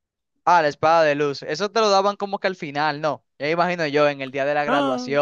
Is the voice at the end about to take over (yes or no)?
no